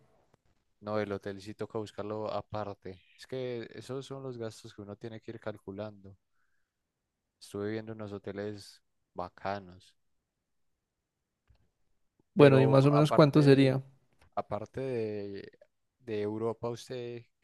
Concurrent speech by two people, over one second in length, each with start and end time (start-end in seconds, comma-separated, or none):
12.3-13.8